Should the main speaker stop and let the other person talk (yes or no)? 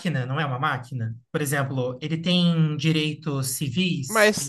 yes